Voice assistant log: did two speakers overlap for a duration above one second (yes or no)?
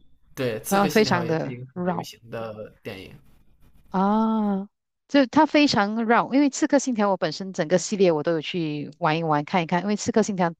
yes